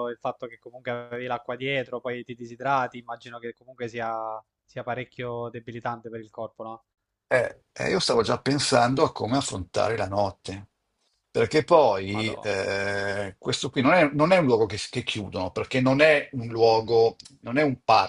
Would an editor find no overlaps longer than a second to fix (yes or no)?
yes